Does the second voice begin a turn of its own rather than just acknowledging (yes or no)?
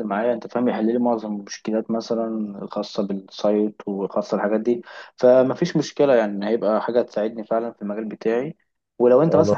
no